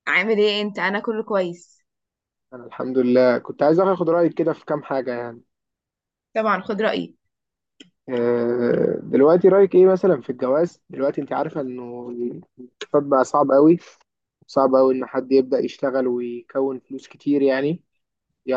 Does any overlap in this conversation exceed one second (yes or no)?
no